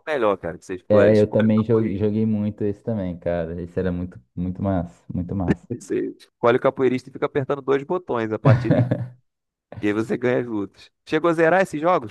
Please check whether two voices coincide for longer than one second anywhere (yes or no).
yes